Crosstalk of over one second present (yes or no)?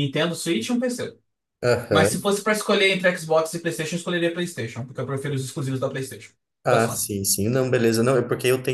no